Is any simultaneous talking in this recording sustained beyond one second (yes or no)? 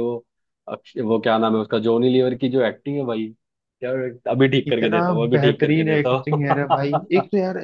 yes